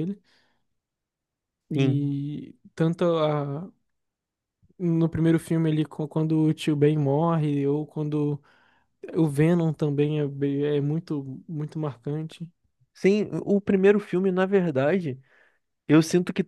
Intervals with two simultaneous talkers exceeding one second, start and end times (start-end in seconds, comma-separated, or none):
none